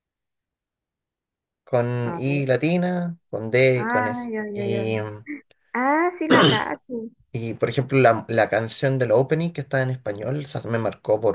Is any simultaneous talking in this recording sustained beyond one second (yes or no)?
no